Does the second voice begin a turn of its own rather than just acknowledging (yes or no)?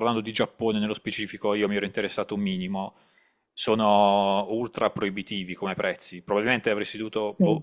no